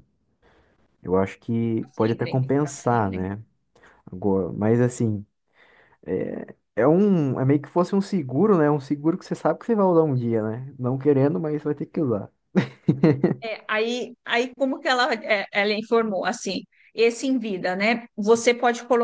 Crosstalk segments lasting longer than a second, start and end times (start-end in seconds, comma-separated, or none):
1.8-3.3